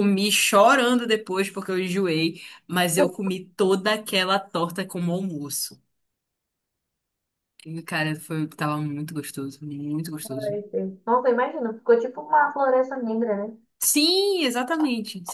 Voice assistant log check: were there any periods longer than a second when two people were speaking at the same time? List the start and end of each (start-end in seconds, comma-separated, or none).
none